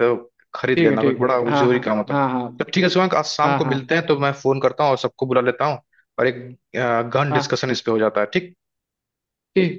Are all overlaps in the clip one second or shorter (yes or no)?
no